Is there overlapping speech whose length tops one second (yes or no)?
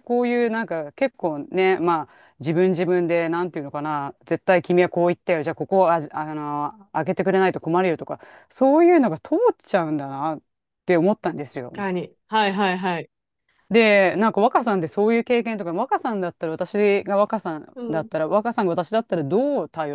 no